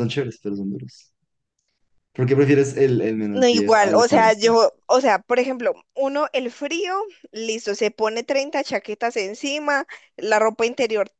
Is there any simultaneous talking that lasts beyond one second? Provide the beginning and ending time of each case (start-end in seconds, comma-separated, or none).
3.3-4.6